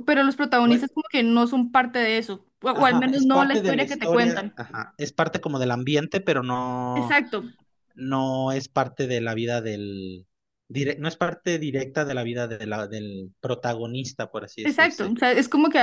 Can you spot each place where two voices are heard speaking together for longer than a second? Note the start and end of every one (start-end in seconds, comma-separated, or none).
2.7-4.6